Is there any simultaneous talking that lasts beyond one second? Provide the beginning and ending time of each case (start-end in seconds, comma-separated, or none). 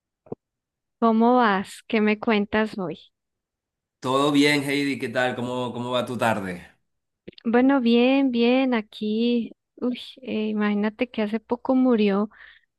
none